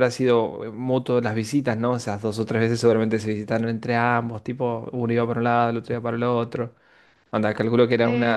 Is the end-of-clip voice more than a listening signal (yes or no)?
yes